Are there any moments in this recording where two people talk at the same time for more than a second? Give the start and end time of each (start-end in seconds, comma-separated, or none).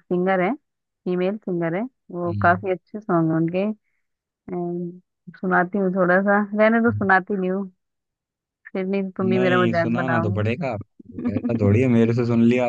9.2-10.5